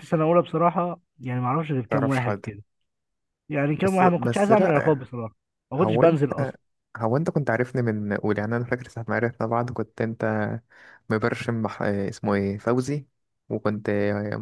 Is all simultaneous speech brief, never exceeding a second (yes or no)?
no